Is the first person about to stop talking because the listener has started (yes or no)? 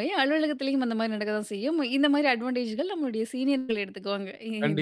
yes